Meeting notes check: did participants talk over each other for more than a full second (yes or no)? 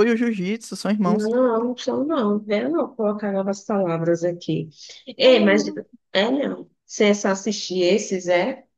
no